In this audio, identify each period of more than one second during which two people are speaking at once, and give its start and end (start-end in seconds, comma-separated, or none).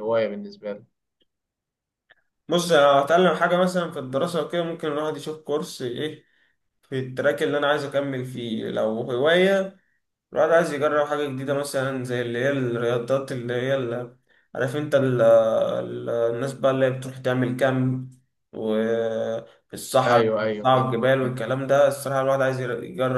20.1-21.4